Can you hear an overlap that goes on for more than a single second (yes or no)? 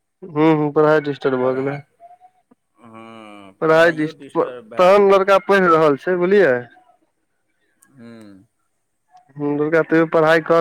yes